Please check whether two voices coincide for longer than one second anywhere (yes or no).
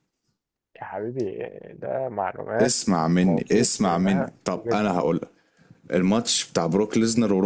yes